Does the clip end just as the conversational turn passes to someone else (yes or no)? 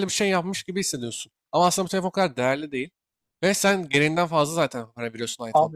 yes